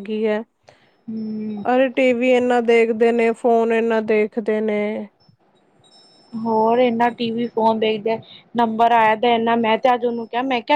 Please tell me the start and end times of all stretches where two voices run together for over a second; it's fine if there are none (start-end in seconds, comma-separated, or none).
none